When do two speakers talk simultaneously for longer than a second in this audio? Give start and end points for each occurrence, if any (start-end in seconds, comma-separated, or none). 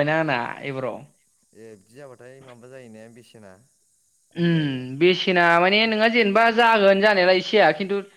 none